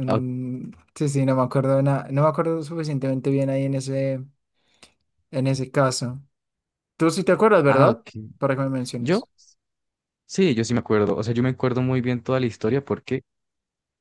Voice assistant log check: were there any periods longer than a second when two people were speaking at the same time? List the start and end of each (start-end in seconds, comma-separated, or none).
none